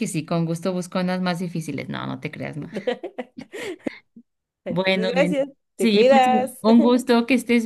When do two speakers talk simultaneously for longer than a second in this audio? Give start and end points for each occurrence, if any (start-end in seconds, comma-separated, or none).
4.7-6.5